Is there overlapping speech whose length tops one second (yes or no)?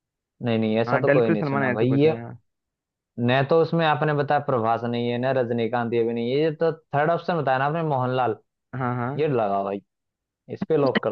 yes